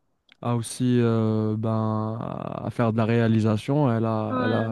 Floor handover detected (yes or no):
no